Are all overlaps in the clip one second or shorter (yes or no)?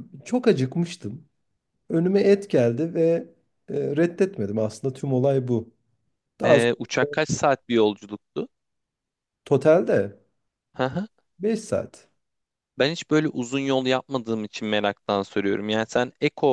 yes